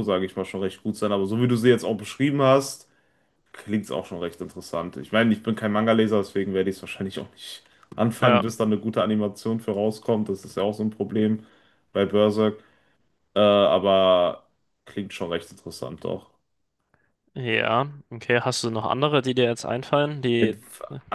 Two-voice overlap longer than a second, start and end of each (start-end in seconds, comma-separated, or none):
none